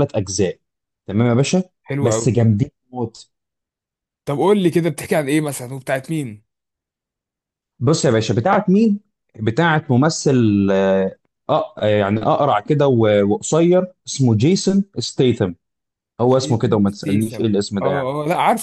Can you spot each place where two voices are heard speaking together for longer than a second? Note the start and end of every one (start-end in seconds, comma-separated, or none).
16.2-18.1